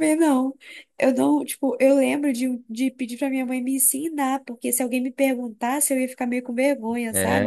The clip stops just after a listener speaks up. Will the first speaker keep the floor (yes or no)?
no